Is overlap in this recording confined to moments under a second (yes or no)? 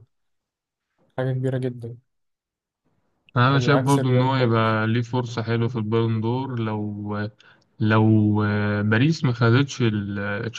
no